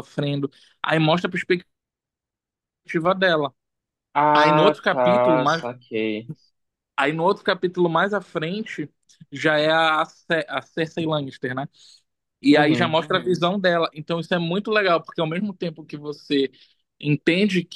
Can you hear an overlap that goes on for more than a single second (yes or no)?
yes